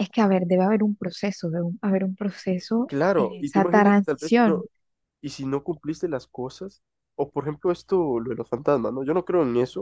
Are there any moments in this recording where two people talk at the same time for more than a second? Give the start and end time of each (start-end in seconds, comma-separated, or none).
2.9-4.6